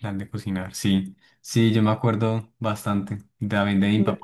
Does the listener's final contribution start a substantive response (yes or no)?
no